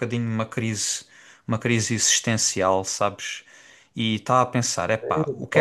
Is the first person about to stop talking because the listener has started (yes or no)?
no